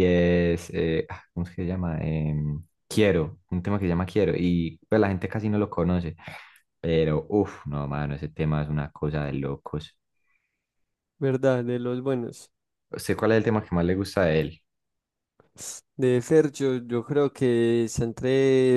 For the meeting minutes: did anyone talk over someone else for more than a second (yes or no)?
no